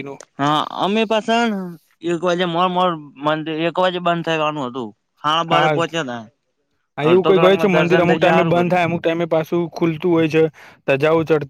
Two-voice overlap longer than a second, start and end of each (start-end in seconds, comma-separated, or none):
7.1-8.8